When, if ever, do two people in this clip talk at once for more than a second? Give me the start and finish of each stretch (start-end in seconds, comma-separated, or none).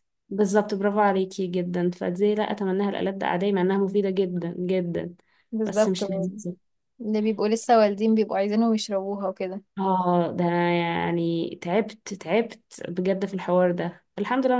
none